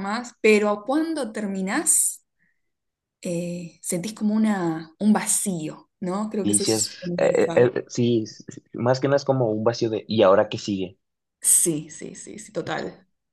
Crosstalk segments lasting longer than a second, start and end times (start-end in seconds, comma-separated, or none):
6.4-7.7